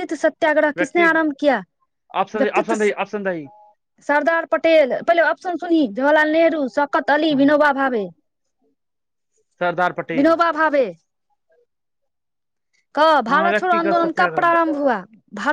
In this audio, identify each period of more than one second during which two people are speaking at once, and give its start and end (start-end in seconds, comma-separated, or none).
13.3-14.7